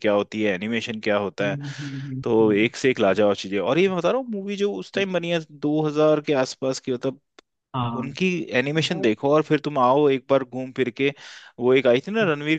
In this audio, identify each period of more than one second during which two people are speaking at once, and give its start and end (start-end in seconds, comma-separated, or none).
none